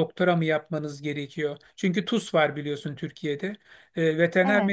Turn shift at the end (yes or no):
no